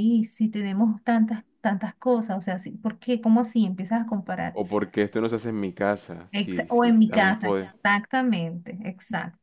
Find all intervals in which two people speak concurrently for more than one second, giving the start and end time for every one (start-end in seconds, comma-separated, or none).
6.3-7.7